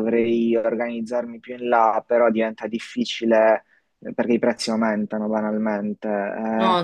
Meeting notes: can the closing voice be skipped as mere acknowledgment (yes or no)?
yes